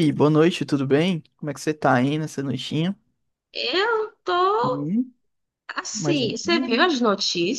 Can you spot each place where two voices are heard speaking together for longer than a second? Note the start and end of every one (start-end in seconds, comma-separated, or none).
none